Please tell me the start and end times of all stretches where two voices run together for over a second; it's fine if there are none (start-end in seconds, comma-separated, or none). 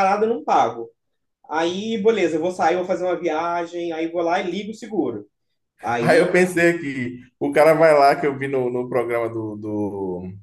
none